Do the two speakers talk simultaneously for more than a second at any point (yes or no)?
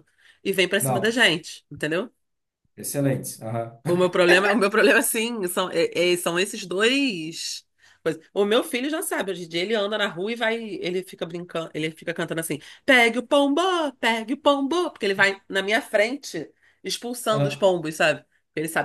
no